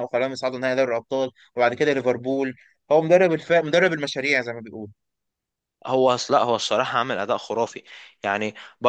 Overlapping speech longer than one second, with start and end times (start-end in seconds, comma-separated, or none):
none